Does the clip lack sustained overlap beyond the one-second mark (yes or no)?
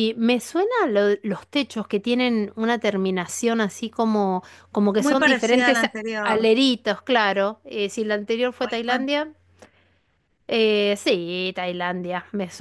no